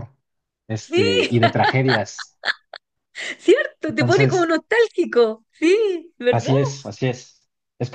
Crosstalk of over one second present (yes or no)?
no